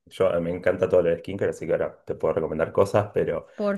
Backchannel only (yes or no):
yes